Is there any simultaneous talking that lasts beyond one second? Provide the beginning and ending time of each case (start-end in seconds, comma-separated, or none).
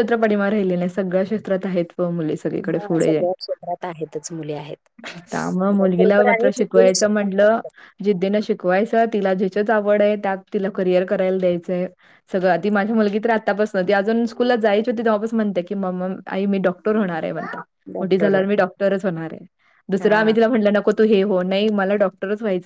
5.9-7.5